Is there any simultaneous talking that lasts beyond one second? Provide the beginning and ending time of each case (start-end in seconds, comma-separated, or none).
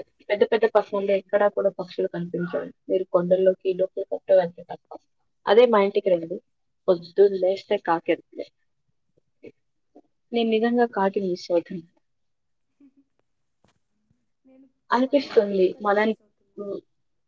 15.1-16.6